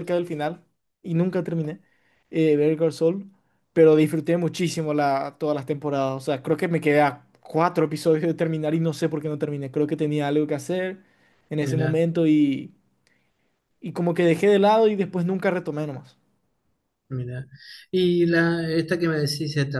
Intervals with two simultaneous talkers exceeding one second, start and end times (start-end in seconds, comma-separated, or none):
none